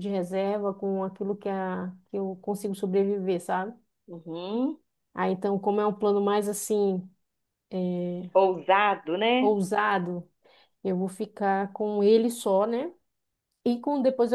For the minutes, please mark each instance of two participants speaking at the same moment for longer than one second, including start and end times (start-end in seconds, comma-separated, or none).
none